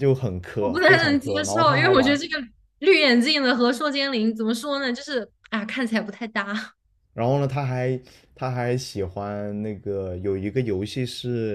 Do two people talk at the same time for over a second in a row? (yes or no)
yes